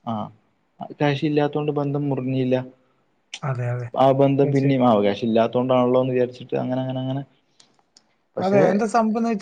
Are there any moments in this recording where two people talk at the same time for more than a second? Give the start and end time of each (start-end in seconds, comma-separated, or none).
none